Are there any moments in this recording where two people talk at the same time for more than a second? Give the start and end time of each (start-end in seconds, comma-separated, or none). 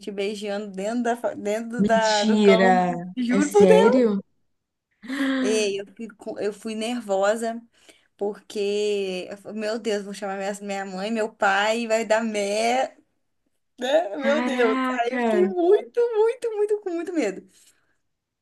1.8-4.0, 14.2-15.5